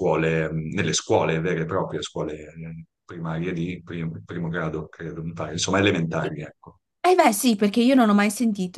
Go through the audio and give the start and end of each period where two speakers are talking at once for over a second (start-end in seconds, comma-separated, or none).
none